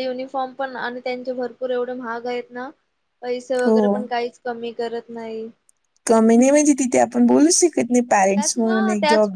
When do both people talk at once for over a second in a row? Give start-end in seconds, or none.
none